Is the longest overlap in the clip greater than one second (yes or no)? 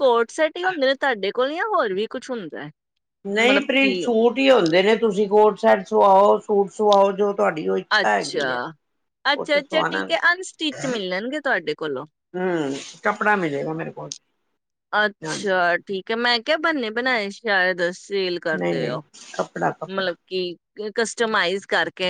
yes